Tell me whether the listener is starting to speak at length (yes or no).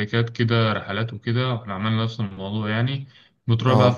no